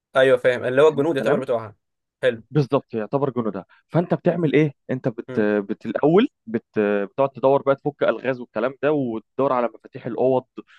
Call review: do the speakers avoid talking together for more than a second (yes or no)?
yes